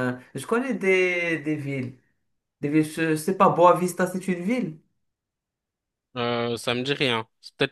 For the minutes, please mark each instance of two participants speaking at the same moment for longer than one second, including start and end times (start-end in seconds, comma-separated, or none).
none